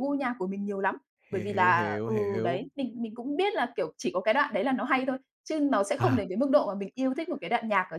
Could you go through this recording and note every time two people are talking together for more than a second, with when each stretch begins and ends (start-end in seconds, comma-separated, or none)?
1.3-2.7